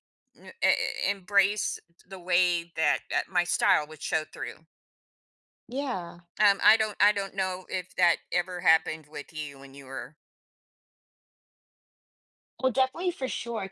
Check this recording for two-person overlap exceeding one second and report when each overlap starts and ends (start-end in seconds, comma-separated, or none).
none